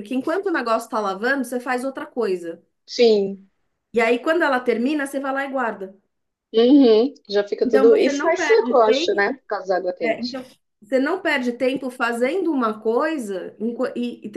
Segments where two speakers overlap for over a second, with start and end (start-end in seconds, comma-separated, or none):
7.6-9.3